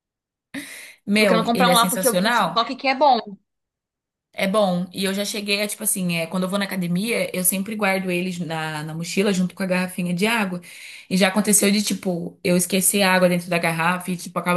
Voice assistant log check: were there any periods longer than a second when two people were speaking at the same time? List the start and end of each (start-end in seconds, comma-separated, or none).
1.1-2.8